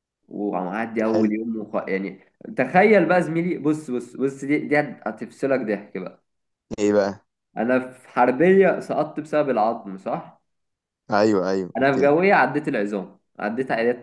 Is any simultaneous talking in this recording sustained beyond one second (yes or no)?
no